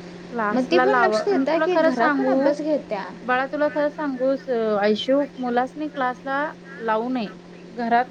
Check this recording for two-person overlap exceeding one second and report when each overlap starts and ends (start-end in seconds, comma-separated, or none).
0.5-2.5